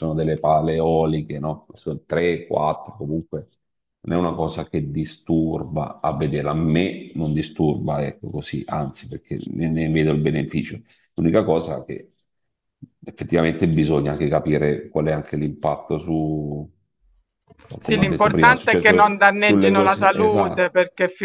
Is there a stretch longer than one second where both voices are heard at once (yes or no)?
yes